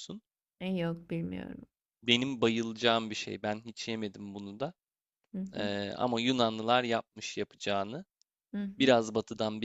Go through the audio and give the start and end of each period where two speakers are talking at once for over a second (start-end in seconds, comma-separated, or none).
none